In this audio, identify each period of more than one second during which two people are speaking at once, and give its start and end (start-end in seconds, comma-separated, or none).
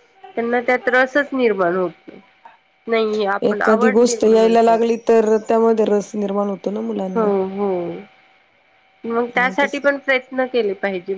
3.5-4.9